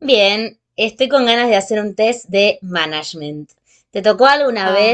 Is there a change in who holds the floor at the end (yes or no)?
no